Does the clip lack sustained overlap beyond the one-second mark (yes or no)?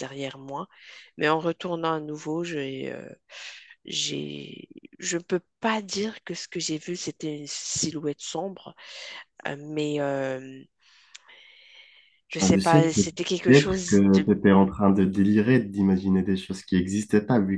no